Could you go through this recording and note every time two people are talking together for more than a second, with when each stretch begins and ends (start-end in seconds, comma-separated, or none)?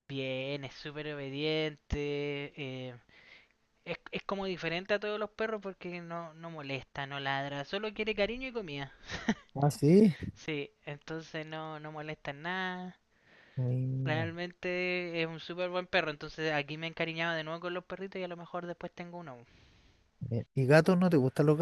none